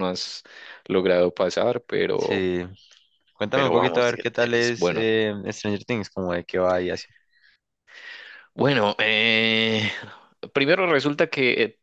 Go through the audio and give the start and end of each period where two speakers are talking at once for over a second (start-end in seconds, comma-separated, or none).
3.5-5.0